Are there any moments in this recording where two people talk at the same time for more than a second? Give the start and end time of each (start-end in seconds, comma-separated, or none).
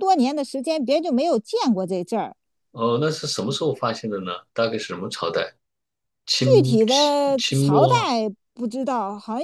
6.4-7.9